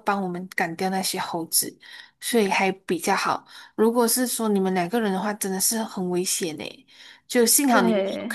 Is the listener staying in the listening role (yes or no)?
yes